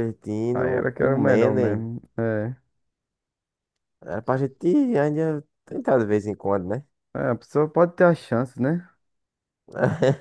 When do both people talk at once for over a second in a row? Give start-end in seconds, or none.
0.5-1.9